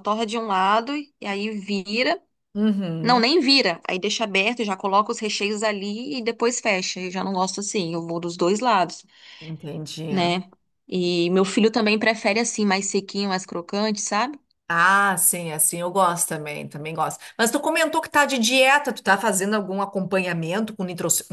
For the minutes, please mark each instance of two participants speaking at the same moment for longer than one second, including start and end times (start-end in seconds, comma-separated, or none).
none